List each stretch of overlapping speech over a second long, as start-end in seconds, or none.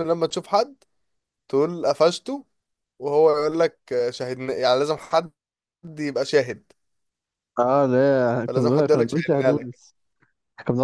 8.5-9.8